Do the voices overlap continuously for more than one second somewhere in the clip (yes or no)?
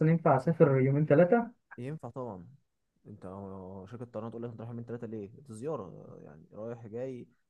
no